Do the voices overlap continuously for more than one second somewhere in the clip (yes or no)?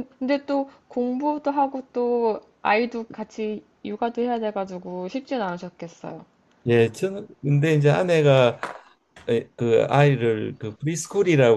no